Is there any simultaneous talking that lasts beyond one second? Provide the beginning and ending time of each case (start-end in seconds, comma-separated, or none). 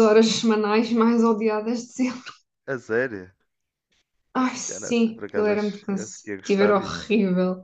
4.7-7.1